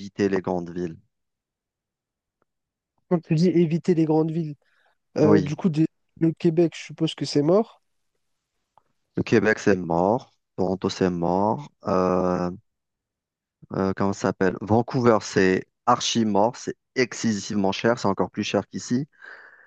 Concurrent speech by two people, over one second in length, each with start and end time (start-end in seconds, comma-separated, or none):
none